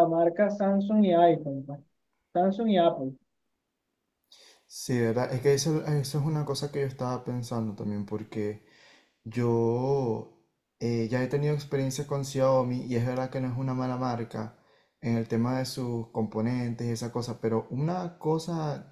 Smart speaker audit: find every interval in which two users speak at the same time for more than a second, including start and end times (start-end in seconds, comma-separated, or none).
none